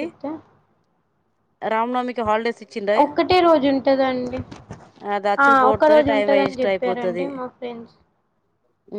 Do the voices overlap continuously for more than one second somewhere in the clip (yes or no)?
yes